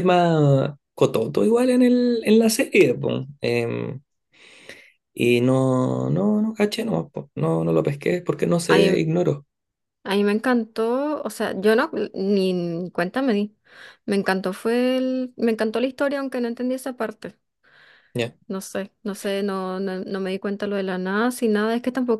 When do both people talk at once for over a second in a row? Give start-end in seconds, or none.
none